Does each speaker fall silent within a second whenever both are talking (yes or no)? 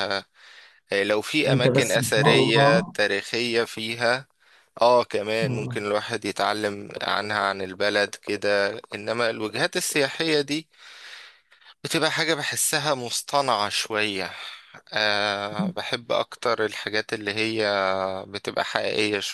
no